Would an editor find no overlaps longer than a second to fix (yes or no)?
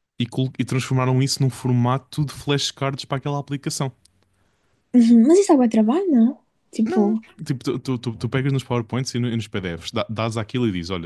yes